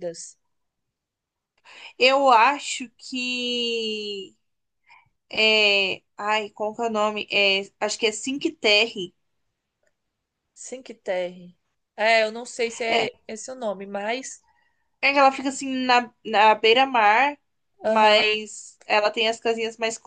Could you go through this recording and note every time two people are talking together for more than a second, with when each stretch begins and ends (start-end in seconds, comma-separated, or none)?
none